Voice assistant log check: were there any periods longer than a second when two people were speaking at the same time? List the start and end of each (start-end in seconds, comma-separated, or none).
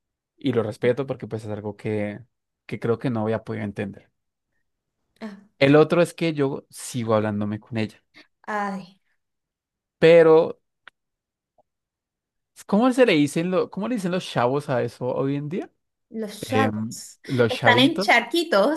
16.4-18.1